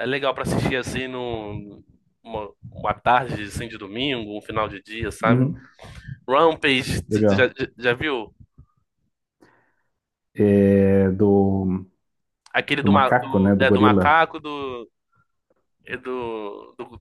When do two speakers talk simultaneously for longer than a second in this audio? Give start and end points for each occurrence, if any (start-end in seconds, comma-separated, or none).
12.6-14.2